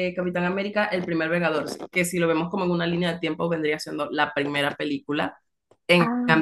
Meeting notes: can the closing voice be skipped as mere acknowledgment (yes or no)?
yes